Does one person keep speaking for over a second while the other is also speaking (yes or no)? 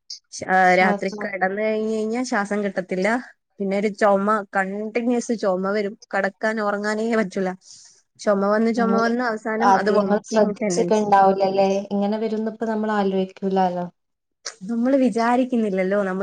no